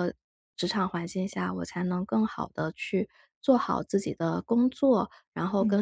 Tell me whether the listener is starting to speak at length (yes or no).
no